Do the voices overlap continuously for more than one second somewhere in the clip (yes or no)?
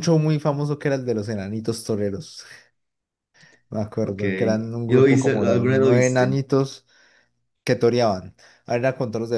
yes